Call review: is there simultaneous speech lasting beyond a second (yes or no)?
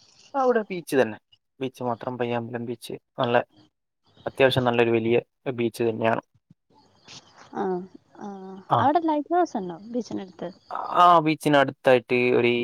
no